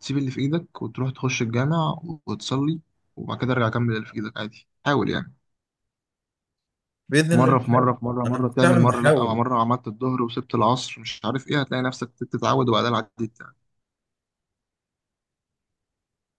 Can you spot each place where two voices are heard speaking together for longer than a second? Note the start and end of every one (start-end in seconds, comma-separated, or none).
7.3-9.4